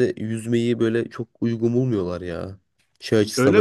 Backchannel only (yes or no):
yes